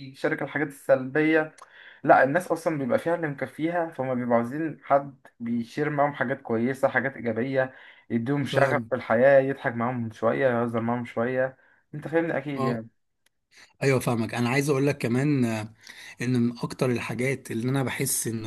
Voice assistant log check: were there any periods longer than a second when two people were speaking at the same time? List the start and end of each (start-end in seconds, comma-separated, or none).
none